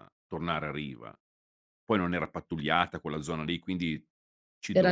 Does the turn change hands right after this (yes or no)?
no